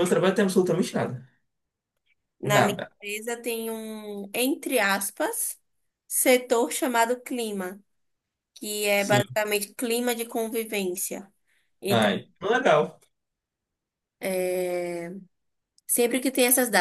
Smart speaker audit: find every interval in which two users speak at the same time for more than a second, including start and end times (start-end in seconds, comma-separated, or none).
none